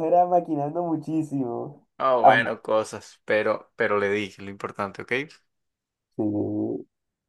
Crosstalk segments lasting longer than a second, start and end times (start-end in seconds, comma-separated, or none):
none